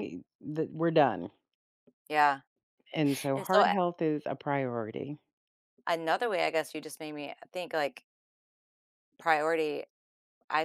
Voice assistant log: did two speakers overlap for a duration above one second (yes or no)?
no